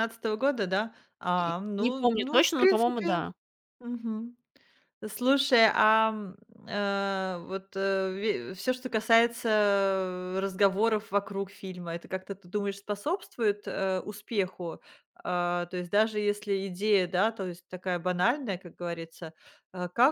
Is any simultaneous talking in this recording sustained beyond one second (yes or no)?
yes